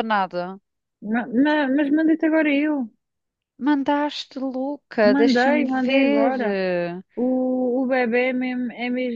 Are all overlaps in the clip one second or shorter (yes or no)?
no